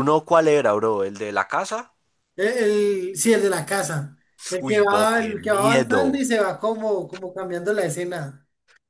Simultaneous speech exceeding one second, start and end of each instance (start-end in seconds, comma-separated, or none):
4.7-6.2